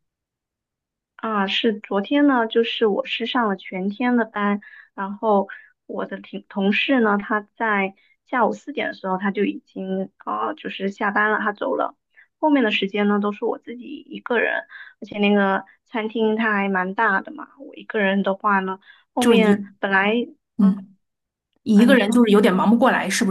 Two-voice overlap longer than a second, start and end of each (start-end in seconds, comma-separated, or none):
none